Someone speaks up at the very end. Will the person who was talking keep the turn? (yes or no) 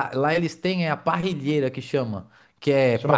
yes